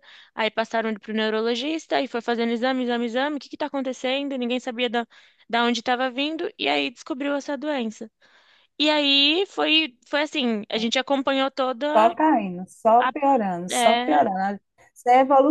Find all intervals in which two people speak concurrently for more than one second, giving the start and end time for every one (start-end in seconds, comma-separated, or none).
none